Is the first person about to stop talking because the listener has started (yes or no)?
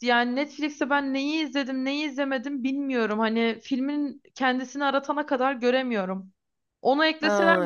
no